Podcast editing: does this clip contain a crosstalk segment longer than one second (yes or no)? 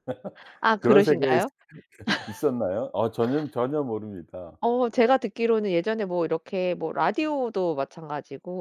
no